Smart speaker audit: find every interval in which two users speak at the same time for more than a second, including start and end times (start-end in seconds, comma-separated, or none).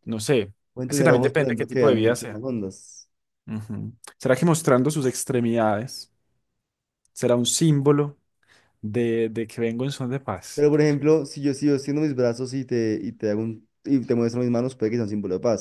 0.9-2.4